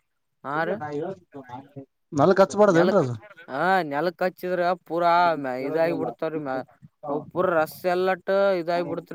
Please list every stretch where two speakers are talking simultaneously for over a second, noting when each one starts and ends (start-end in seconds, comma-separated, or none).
none